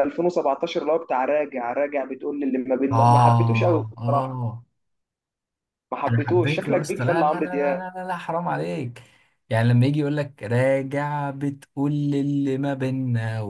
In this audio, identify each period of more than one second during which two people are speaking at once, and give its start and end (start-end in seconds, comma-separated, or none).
2.9-4.4, 6.1-7.8